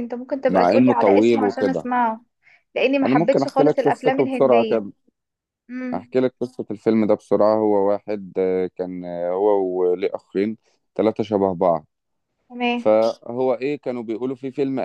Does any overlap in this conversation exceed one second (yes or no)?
yes